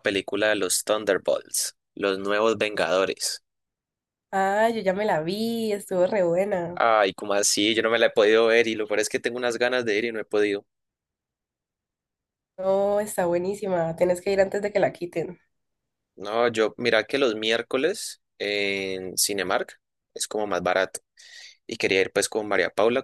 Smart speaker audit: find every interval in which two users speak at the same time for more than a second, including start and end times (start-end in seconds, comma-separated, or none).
none